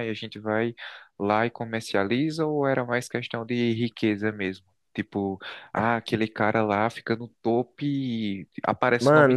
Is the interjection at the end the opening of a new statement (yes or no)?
yes